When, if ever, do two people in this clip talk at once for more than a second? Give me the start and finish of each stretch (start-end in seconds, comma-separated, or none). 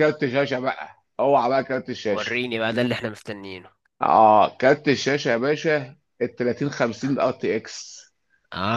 none